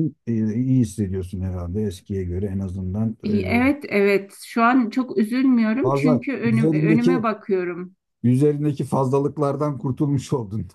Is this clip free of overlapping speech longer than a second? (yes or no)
no